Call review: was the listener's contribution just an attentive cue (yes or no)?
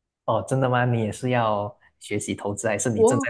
no